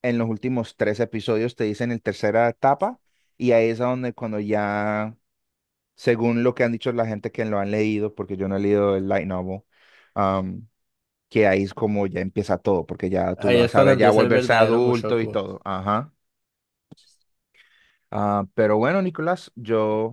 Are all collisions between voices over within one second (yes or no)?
no